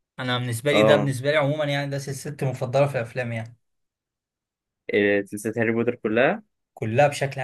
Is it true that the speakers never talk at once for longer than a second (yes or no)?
yes